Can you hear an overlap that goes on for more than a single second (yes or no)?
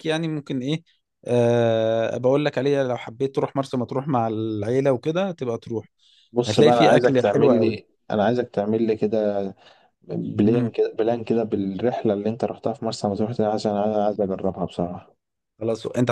yes